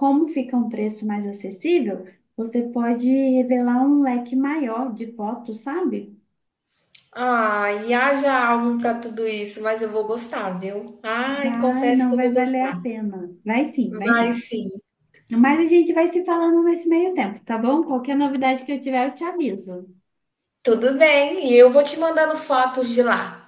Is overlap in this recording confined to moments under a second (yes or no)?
no